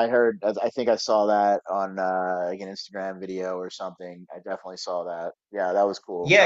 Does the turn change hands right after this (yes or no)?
yes